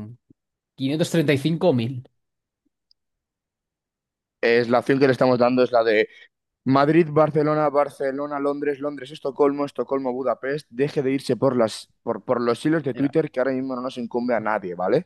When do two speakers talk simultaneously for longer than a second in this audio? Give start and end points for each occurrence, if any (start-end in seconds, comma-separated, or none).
none